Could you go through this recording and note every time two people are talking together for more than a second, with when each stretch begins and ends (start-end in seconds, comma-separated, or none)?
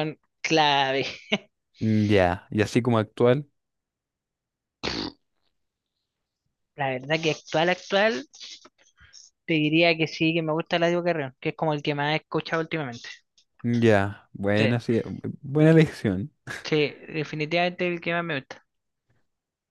none